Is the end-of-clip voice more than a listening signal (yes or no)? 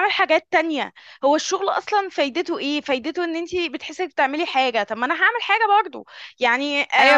yes